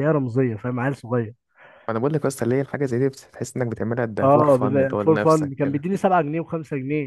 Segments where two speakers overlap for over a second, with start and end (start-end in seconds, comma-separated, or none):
4.2-5.9